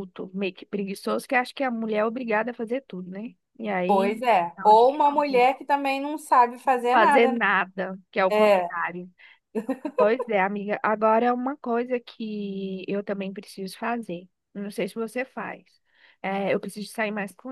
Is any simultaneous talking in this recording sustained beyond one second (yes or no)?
yes